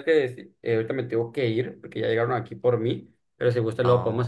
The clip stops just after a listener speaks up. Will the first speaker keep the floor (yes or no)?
yes